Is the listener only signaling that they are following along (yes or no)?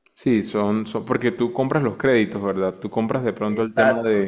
no